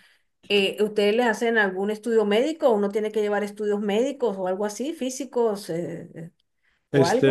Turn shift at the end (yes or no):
yes